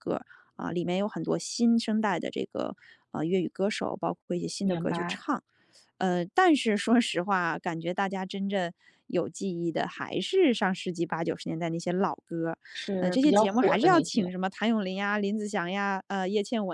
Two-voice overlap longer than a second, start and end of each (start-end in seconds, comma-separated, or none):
13.0-14.3